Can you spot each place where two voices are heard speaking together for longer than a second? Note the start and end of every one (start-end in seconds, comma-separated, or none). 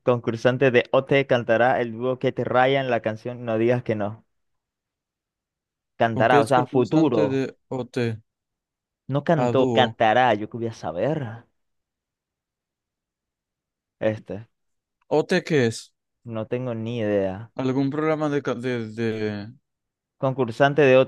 6.1-7.4